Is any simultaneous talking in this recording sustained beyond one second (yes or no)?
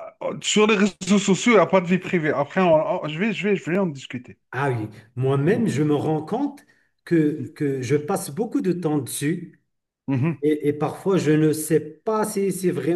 no